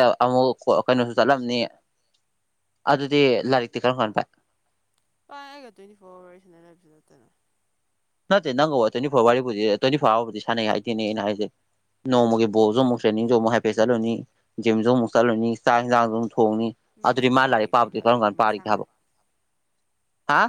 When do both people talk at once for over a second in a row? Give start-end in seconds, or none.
17.1-18.8